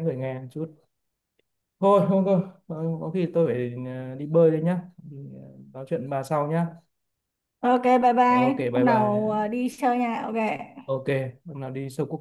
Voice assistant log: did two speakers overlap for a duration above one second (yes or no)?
yes